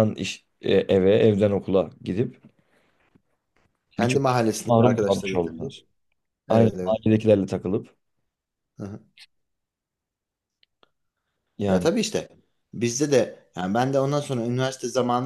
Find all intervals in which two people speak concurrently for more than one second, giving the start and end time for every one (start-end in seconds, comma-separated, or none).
4.0-5.8